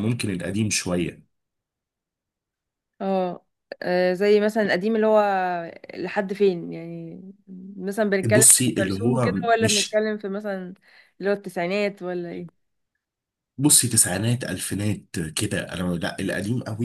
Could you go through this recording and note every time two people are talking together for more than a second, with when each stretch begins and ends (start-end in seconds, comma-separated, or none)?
8.3-10.0